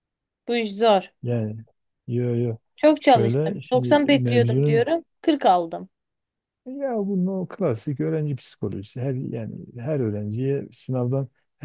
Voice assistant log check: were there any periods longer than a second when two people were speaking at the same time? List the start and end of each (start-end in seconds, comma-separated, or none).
3.0-4.9